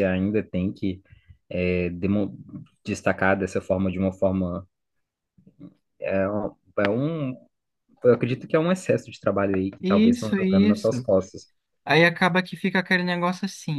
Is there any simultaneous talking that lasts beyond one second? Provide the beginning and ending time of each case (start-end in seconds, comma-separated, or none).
9.8-11.1